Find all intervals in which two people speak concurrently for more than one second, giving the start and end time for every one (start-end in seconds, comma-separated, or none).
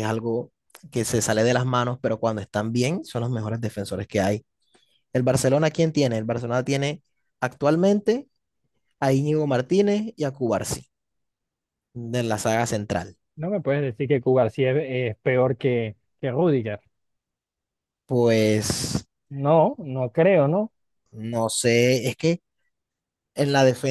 none